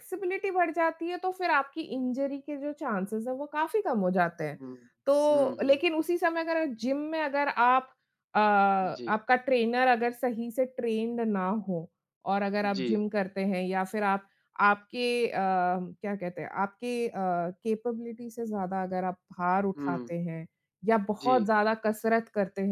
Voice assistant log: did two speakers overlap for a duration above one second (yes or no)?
no